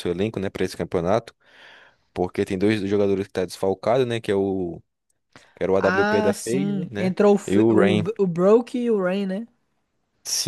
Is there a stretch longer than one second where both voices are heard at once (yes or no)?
yes